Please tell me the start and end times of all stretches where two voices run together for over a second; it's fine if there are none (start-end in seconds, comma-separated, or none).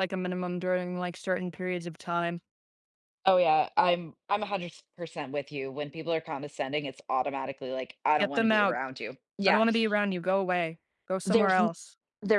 none